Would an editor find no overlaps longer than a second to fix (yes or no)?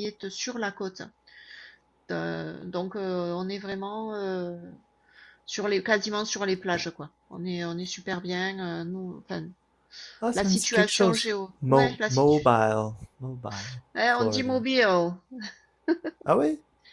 no